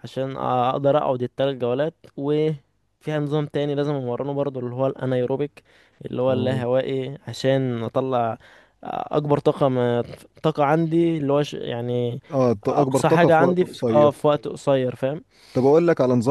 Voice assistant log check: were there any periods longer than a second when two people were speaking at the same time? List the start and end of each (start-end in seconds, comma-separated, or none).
12.7-14.2